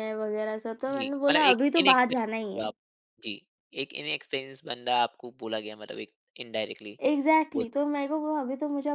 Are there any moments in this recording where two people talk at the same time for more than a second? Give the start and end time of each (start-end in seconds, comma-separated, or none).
0.9-2.7